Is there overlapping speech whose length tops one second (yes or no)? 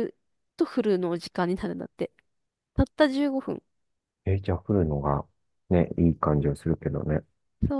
no